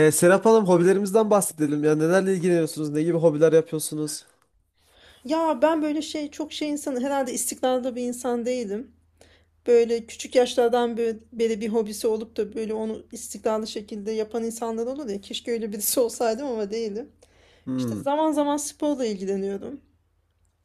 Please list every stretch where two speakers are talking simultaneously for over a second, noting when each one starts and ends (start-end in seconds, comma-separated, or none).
none